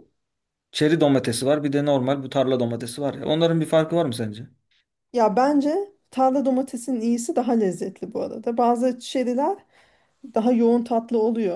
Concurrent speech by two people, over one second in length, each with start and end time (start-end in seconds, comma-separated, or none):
none